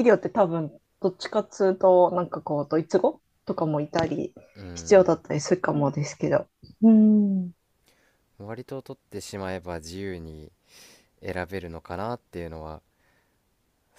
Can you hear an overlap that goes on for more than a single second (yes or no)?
no